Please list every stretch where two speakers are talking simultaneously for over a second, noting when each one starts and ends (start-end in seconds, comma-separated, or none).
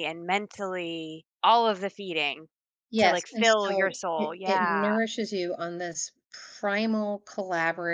3.0-4.9